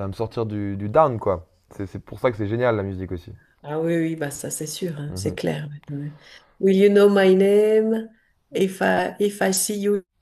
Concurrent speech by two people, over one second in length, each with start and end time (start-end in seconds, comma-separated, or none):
none